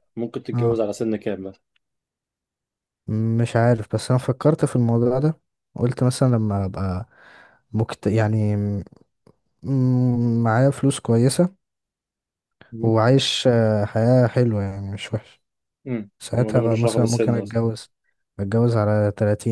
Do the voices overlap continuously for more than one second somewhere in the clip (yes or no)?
yes